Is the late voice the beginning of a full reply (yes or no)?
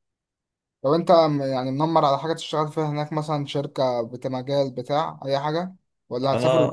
yes